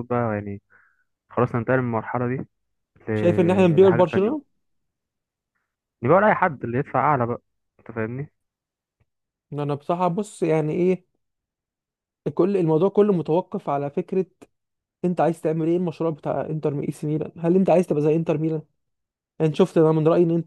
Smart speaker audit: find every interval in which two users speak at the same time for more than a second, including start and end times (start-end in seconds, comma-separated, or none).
3.1-4.3